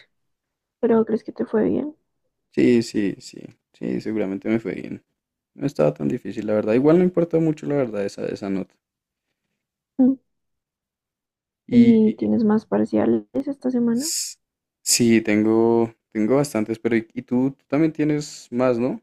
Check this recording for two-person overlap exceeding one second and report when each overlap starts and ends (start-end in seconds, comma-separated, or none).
none